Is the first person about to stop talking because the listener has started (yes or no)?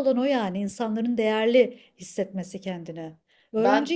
no